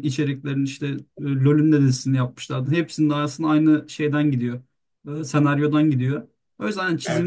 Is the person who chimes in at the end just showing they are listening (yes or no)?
yes